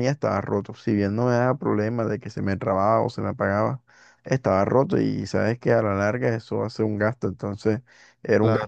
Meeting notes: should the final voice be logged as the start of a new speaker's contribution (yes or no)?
no